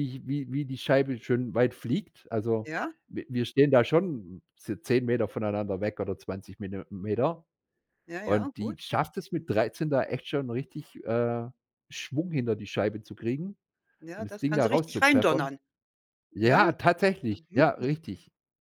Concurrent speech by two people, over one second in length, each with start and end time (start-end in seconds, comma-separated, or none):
14.1-15.5